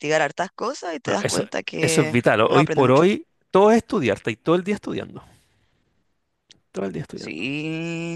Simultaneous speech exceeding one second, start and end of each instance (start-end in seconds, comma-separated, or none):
1.0-3.0